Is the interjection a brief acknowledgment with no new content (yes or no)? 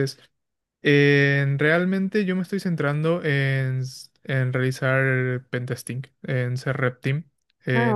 yes